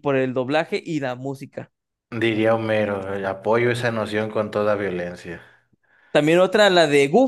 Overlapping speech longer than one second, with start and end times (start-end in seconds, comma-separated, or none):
none